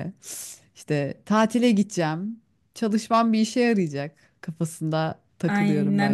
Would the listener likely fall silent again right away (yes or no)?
no